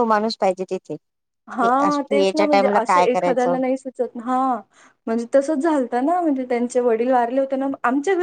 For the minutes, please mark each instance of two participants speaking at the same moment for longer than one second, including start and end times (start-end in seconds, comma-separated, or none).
1.6-3.5